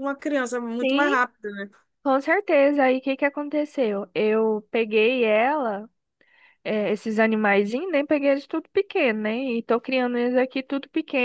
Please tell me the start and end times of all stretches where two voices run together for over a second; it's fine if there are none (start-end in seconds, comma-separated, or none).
none